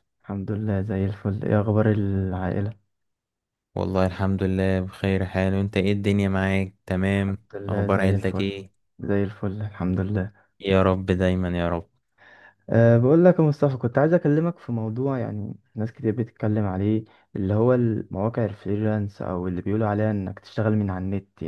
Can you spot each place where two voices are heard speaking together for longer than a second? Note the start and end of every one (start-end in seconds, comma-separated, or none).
7.1-8.5